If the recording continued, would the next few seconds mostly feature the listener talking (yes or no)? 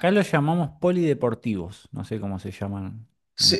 yes